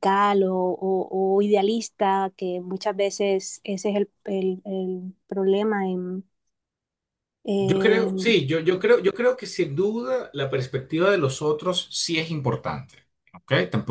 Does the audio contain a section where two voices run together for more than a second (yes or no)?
no